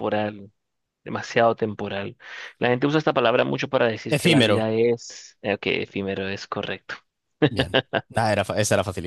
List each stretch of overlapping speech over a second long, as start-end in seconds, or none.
none